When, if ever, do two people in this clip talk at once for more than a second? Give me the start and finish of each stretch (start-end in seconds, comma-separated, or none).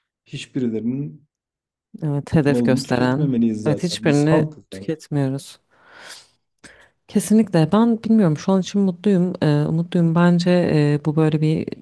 2.5-4.9